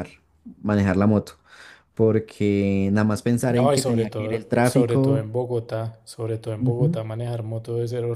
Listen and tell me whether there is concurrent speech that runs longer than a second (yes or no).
yes